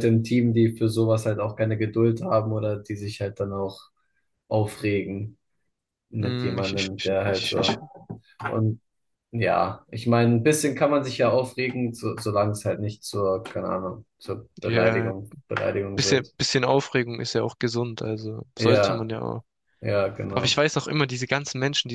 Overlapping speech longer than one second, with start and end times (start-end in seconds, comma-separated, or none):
6.2-7.7